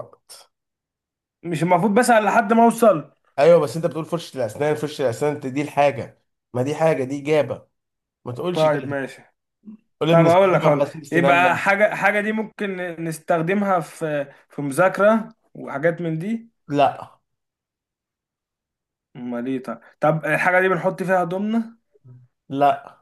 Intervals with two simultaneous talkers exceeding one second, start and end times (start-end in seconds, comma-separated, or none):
10.1-11.6